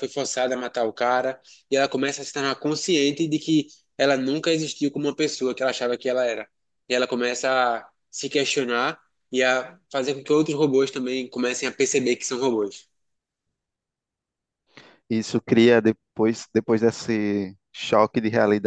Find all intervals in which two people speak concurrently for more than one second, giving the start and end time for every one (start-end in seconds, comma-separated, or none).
none